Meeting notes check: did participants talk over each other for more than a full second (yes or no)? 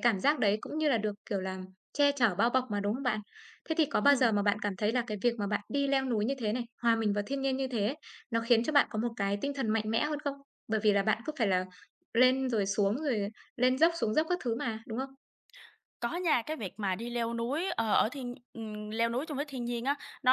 no